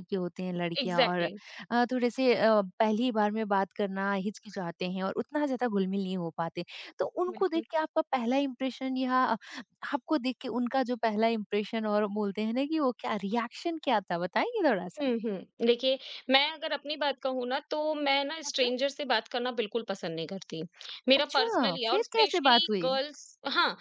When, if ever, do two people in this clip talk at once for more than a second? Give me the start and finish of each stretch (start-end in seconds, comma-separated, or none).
21.2-22.9